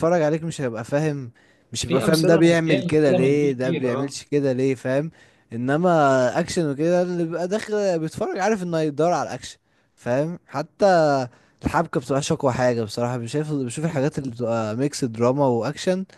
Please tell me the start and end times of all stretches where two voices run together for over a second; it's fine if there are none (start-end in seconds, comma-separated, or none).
1.8-4.2